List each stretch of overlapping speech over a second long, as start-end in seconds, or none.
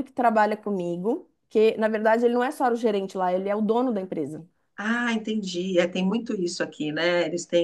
none